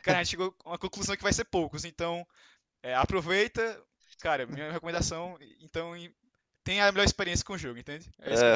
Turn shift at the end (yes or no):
yes